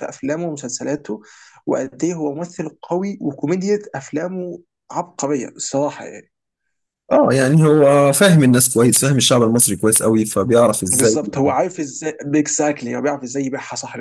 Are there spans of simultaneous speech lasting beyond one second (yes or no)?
no